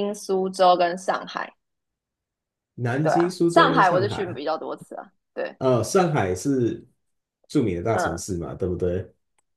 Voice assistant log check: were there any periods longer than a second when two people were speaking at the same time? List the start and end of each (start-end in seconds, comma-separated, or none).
3.0-4.4